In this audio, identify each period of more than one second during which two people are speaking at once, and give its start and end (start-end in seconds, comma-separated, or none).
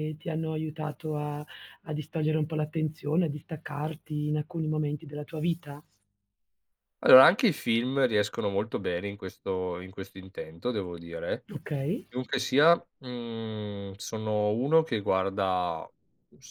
none